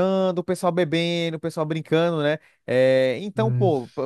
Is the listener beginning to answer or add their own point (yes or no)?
no